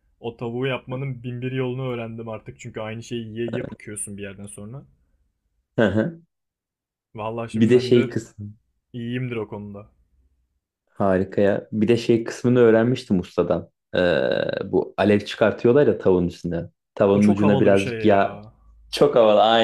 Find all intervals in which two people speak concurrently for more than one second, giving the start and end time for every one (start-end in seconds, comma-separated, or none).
17.1-18.4